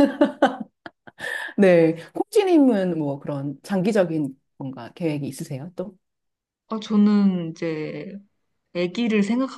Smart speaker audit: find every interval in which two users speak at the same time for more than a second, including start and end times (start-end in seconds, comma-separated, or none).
none